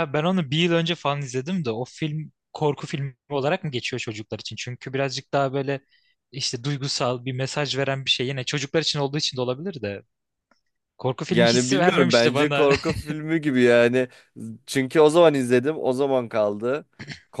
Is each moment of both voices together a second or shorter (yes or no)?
no